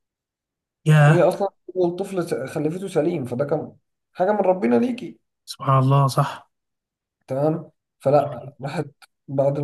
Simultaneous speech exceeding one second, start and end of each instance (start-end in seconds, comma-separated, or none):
none